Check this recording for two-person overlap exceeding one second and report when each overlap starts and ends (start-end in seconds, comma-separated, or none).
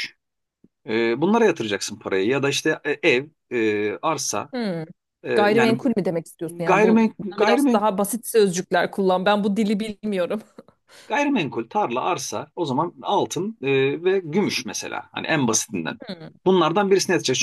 6.5-7.8